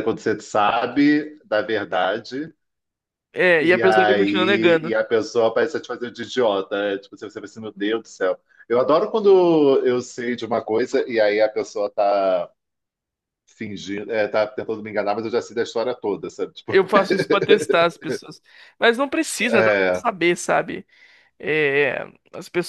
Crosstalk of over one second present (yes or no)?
yes